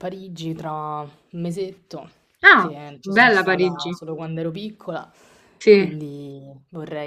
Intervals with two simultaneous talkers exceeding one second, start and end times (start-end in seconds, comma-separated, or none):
2.5-3.9